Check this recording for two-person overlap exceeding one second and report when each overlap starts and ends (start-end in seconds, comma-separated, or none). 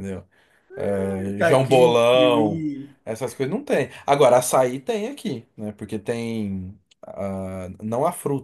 1.4-2.6